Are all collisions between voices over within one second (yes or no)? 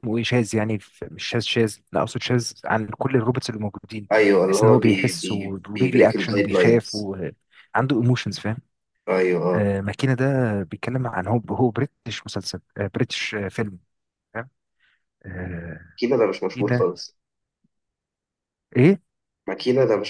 no